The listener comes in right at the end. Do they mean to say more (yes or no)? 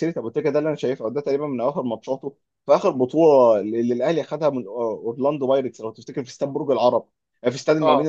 no